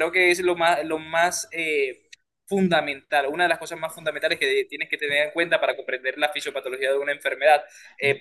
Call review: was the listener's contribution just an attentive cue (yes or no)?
yes